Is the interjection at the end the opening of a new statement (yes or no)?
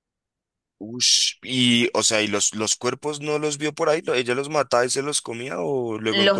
yes